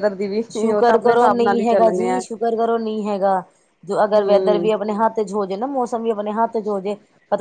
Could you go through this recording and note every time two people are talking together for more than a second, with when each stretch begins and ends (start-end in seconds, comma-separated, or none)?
0.5-2.2